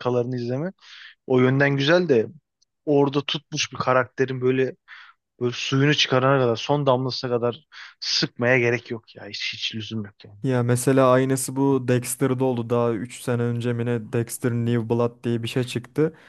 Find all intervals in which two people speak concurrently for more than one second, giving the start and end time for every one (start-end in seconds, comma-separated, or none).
none